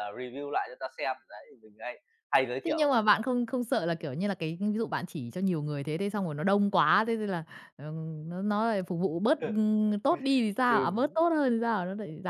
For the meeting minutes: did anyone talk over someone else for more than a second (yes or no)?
no